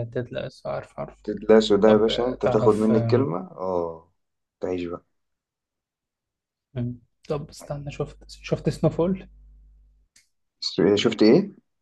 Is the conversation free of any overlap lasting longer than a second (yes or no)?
no